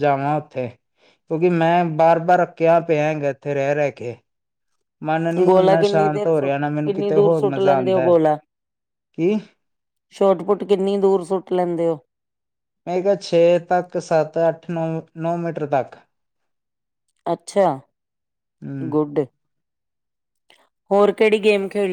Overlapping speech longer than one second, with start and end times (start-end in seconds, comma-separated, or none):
5.5-8.0